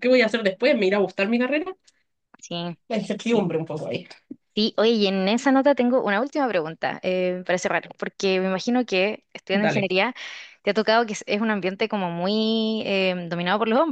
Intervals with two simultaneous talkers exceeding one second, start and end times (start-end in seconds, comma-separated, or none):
none